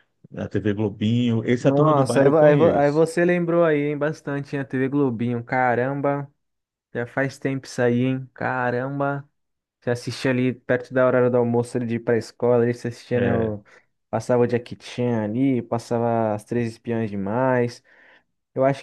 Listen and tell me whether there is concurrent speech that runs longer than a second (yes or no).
yes